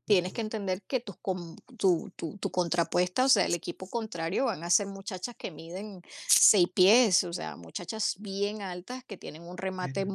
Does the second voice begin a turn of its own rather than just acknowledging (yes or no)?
no